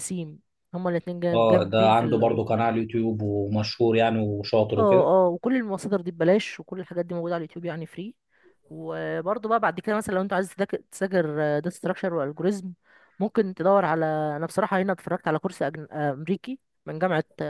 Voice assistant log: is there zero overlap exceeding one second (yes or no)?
no